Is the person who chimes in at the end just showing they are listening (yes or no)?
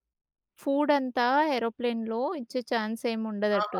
no